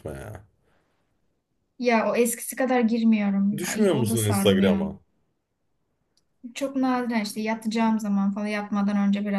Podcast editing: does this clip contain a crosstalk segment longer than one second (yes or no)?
yes